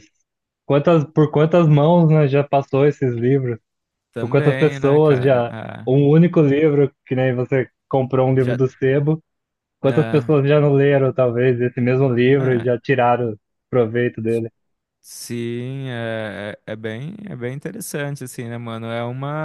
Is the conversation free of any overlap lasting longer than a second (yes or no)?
no